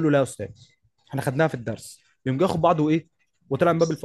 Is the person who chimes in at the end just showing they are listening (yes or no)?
yes